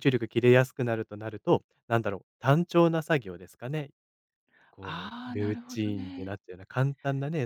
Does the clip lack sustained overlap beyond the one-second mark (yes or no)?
no